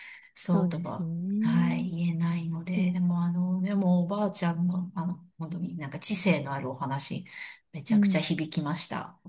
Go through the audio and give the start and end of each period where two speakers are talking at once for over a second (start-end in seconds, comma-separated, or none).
0.5-1.9